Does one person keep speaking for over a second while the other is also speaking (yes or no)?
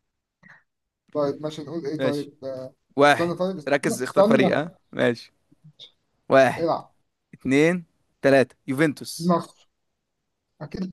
yes